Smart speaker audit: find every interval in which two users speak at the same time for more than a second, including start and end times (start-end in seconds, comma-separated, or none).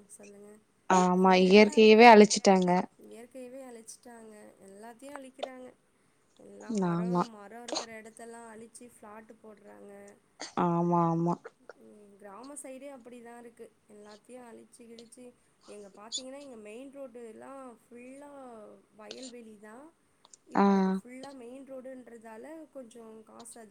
1.2-2.7